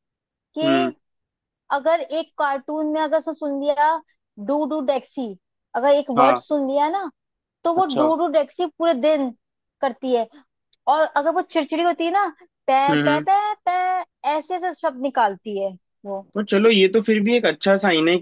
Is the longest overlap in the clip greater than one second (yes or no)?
no